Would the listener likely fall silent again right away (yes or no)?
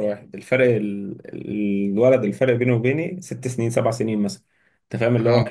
yes